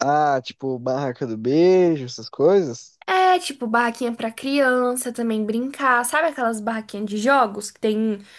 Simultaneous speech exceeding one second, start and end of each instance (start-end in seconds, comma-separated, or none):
none